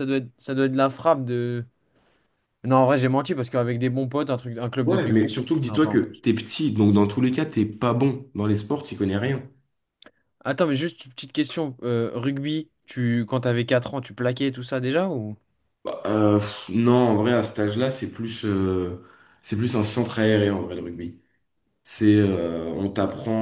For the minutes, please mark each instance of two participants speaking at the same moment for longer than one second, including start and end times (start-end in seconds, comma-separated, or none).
4.8-6.2